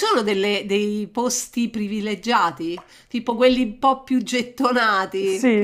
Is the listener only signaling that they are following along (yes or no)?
no